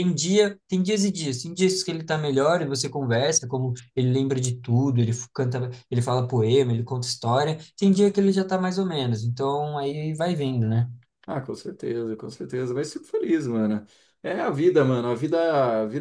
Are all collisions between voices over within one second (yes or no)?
yes